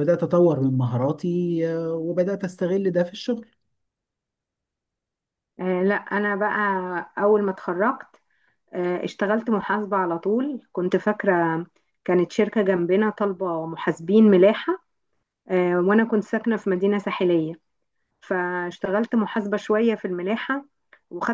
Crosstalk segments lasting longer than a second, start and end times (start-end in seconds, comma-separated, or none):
none